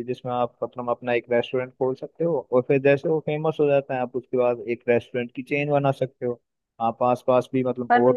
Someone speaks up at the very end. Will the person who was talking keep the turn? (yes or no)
no